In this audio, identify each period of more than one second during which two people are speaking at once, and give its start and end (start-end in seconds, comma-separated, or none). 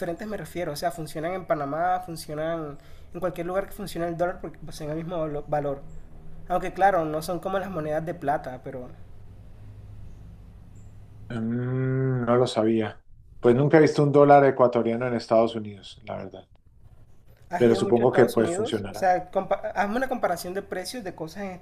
17.6-19.1